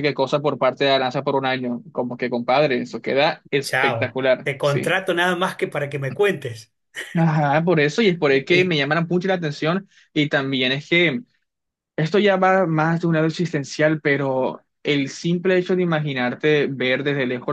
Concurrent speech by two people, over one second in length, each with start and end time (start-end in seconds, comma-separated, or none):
3.6-5.0